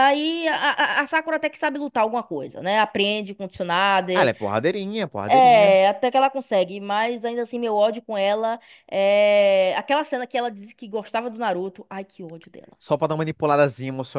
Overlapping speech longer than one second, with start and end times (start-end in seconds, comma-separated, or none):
none